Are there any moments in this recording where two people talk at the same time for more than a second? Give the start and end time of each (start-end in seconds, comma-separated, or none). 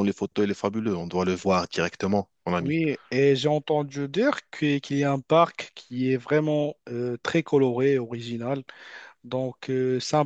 none